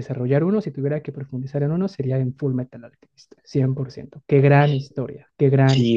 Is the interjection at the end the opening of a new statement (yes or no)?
yes